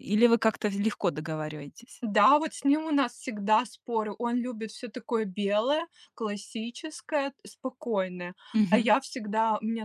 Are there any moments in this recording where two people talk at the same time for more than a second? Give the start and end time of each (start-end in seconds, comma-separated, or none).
none